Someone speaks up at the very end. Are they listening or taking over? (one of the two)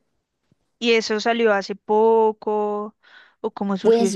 taking over